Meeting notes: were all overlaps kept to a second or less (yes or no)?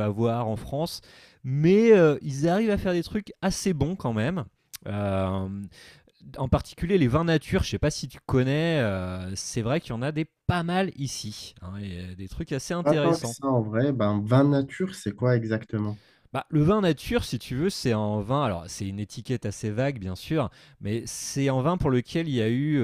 yes